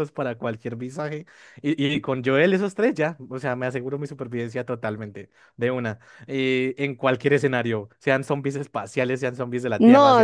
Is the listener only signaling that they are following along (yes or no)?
no